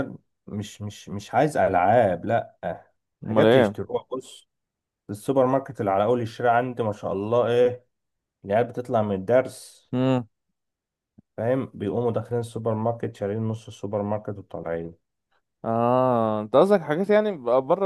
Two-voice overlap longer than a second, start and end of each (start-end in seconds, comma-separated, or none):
none